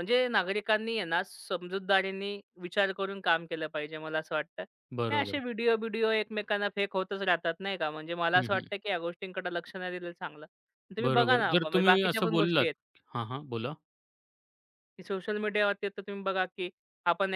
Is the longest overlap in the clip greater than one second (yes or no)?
yes